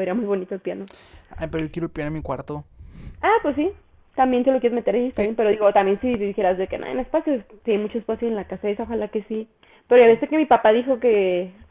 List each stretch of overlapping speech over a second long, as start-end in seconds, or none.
none